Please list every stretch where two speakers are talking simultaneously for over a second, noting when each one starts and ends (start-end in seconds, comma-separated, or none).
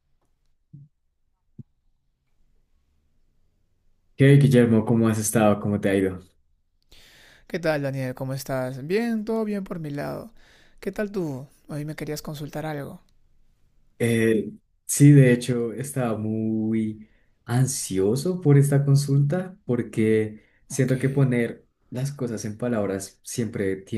none